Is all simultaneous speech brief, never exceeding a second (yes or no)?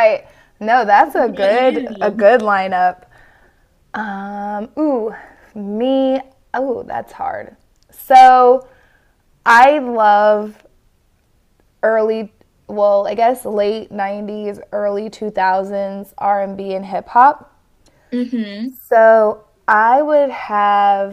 no